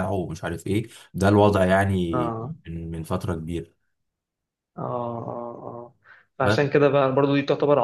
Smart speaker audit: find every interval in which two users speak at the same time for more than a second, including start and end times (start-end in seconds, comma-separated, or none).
none